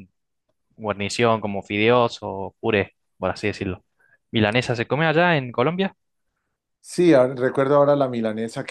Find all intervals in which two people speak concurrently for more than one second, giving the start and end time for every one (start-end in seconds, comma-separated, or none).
none